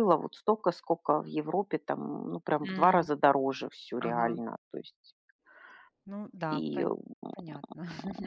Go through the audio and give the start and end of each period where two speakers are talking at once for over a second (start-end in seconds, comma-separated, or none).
none